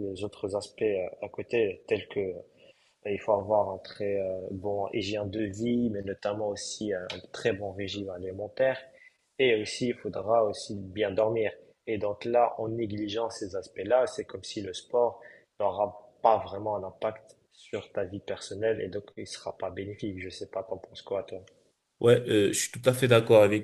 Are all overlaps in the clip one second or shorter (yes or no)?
yes